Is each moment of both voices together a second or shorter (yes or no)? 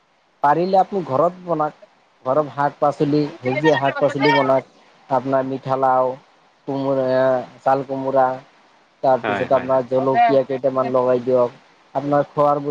no